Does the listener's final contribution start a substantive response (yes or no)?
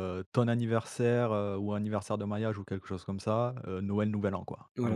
yes